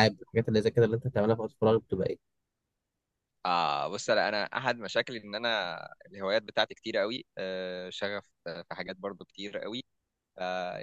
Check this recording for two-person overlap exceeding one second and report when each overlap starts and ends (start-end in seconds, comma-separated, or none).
none